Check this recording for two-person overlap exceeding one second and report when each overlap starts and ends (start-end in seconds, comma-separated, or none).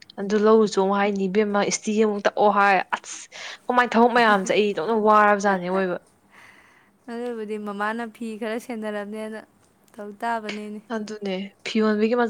none